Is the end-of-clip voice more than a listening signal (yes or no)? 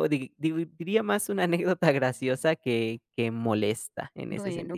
yes